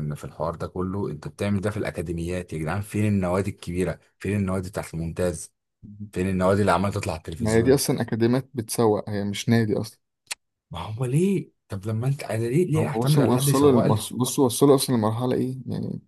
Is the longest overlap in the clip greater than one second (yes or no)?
yes